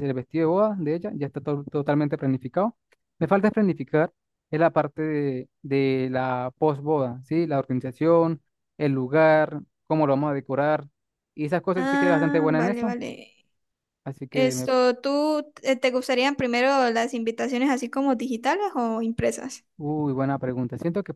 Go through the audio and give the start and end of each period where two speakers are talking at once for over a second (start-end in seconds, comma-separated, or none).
11.8-13.0